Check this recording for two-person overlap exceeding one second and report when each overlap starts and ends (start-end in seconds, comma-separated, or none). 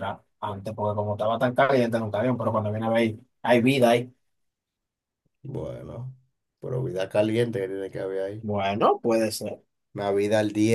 none